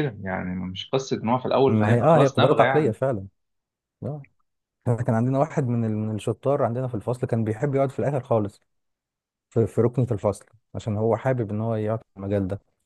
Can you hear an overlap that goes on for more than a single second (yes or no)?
yes